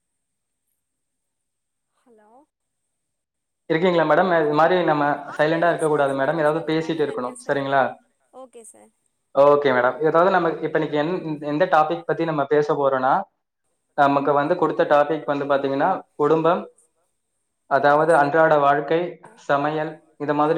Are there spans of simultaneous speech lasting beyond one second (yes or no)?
yes